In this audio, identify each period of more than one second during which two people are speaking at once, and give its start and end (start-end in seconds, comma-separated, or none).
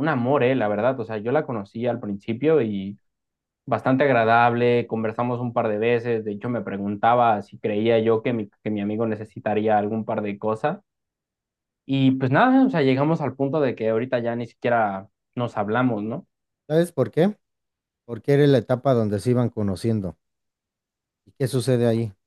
none